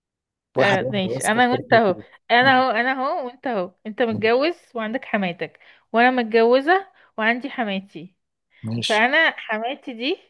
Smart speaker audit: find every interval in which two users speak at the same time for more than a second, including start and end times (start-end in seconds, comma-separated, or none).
0.6-1.9